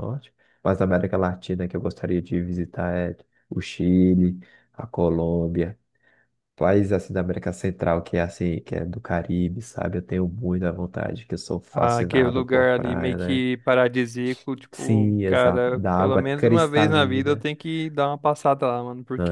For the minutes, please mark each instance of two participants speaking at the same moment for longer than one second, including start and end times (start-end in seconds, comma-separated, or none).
11.7-13.4, 14.7-17.4